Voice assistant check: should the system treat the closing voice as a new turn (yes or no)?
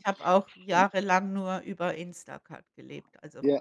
yes